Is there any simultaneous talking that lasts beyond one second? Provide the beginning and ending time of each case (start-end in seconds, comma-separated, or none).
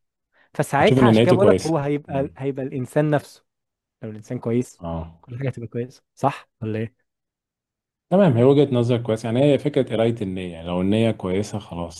0.8-2.4